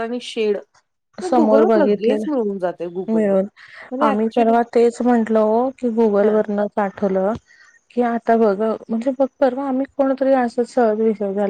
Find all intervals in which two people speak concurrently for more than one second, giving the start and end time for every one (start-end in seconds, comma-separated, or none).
1.4-3.4